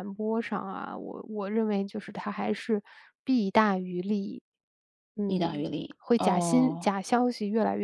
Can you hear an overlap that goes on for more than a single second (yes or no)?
yes